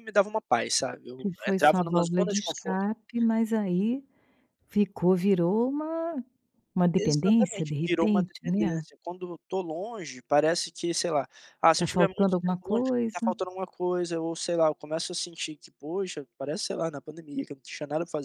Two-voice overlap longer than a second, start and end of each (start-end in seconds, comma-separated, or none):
1.2-2.8, 7.0-8.8, 11.8-13.2